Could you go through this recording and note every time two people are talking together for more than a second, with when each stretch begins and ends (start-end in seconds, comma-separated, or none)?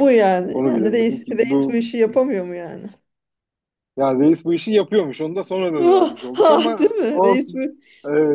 0.5-1.8, 5.8-7.6